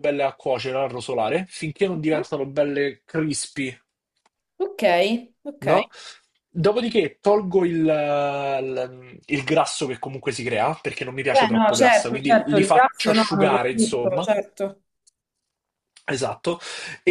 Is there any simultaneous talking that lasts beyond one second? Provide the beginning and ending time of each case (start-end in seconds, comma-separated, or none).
11.3-14.3